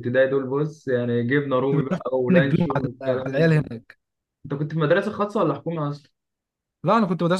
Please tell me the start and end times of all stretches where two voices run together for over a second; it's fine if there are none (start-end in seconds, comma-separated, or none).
1.6-3.6